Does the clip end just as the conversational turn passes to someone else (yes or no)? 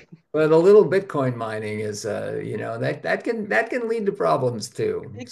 yes